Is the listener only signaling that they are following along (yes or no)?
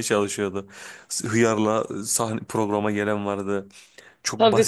yes